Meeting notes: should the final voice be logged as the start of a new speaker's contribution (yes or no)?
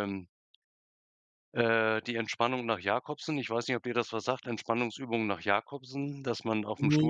no